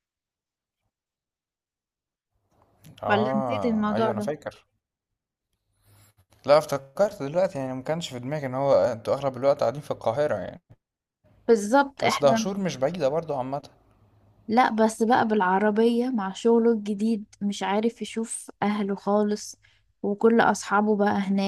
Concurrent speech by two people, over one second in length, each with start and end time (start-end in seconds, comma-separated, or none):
3.1-4.3